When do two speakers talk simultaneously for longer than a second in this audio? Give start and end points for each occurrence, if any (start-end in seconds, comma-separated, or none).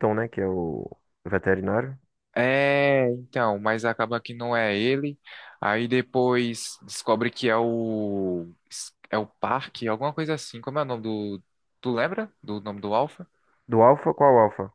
none